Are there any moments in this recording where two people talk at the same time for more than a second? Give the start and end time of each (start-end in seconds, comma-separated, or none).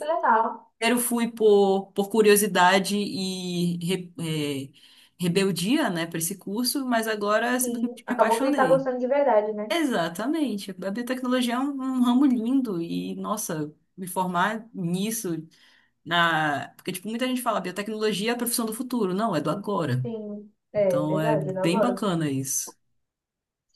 7.6-8.9, 20.8-22.1